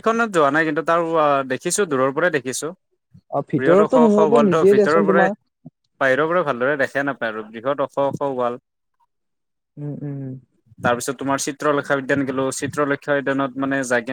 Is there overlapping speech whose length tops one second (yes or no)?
yes